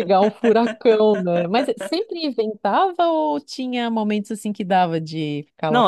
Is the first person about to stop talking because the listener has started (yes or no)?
yes